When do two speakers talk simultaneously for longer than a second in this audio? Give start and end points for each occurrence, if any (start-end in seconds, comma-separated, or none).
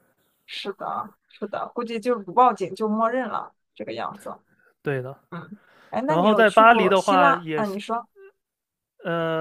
6.1-7.8